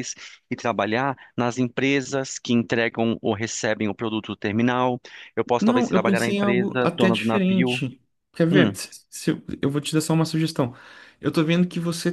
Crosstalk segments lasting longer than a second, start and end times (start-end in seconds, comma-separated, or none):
5.6-7.8